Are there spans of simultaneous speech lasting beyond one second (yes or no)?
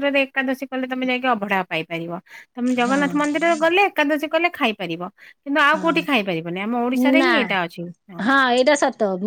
yes